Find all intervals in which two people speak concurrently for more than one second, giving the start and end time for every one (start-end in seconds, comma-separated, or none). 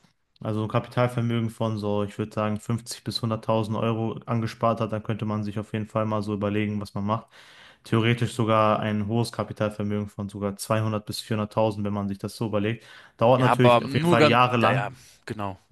13.4-15.0